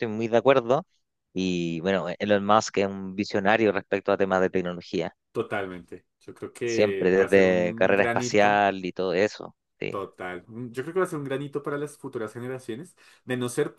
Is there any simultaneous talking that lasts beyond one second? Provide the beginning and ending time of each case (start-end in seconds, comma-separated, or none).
6.6-8.7